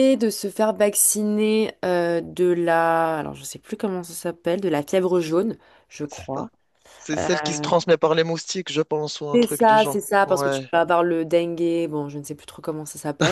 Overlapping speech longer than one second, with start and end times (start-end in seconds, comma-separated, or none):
9.3-10.7